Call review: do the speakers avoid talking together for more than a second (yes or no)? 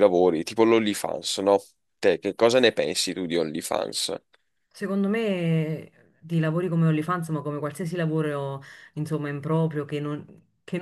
yes